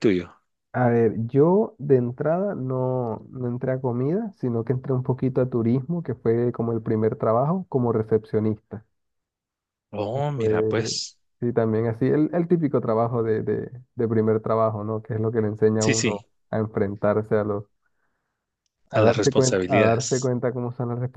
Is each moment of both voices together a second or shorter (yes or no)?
no